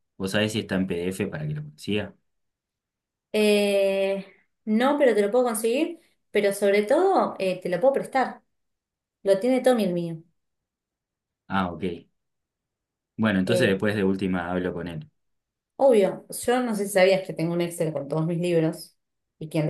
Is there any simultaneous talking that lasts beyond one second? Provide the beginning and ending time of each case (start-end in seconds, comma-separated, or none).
none